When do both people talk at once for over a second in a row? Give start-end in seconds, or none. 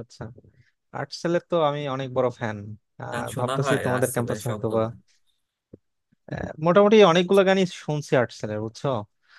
3.1-4.8